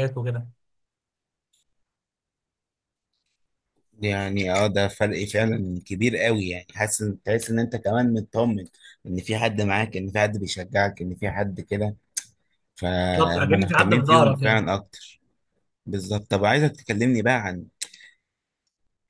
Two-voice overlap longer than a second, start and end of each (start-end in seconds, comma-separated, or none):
13.2-14.7